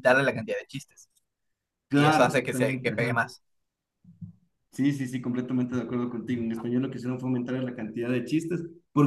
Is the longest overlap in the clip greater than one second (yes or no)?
yes